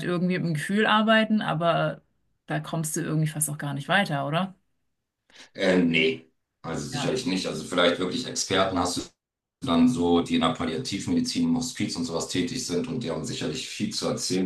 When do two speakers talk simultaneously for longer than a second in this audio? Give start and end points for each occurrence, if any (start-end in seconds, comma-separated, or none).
none